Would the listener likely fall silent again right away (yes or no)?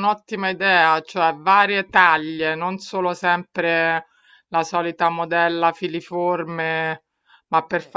yes